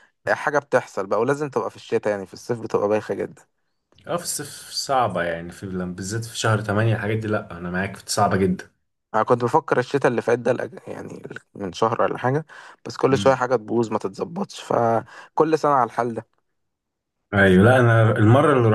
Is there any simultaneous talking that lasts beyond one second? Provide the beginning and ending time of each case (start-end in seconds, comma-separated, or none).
none